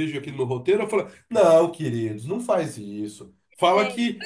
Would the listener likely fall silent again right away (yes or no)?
yes